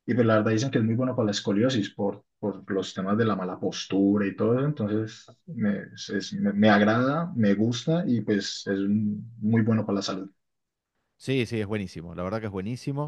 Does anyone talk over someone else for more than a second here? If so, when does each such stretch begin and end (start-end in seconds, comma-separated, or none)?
none